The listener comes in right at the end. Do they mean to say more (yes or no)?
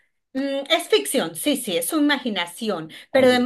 no